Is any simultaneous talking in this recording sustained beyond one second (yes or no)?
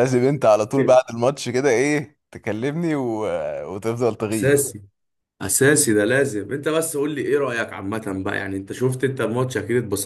no